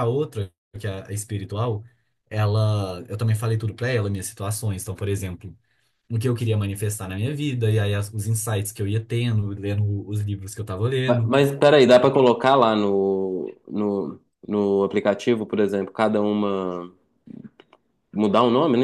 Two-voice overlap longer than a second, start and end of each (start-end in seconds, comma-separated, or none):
none